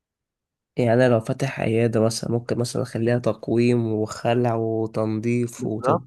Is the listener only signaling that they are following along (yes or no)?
no